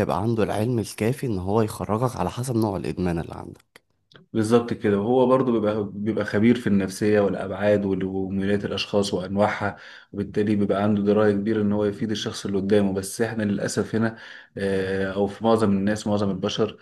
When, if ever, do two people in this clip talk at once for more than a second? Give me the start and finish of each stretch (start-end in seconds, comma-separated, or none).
none